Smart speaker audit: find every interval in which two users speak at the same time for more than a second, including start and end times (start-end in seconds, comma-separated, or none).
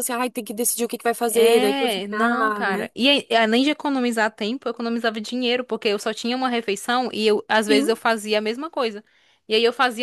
1.2-2.9